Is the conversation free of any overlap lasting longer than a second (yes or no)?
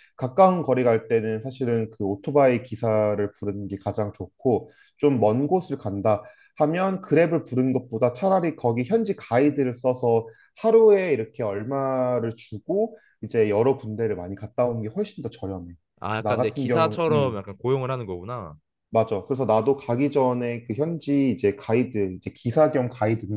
no